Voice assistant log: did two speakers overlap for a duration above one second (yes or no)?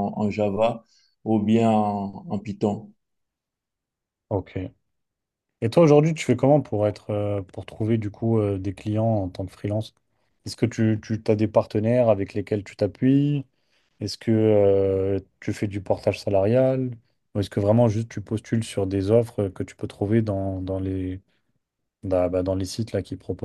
no